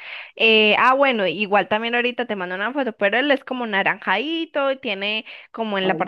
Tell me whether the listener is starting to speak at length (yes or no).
no